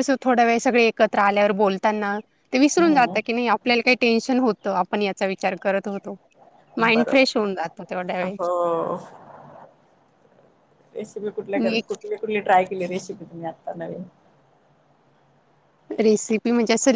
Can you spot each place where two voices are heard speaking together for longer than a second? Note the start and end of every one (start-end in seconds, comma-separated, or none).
none